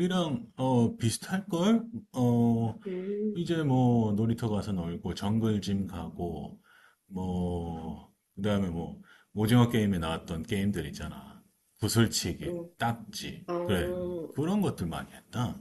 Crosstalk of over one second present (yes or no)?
no